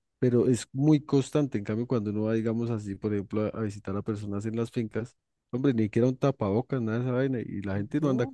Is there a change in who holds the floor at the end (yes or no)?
no